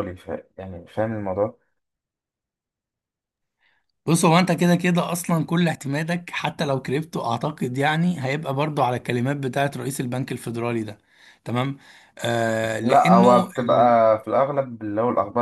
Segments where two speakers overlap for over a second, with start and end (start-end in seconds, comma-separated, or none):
12.8-14.1